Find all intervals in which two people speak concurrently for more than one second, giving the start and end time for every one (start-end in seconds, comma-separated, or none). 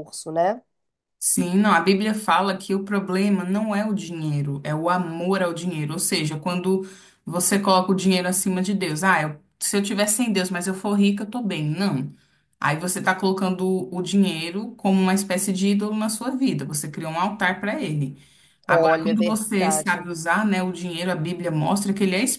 18.7-20.1